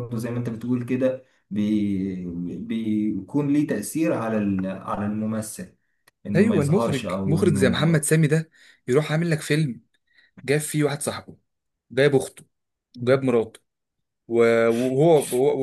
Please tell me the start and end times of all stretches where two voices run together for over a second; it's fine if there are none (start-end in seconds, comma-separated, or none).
6.3-8.1